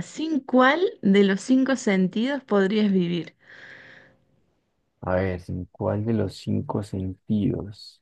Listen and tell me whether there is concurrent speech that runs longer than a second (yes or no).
no